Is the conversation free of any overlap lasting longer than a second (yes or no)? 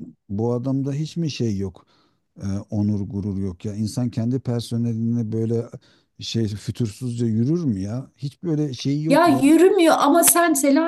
yes